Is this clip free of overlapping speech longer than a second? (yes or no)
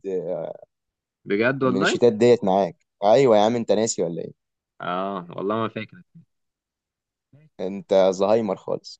yes